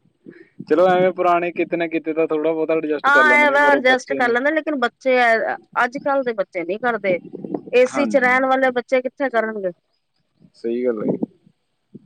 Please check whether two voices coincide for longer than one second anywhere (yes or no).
yes